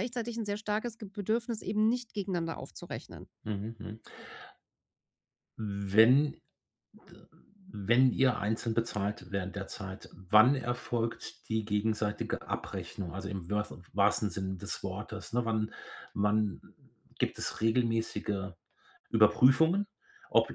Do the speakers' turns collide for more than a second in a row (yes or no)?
no